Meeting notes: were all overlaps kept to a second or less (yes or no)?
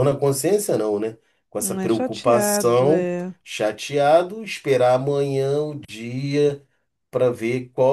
no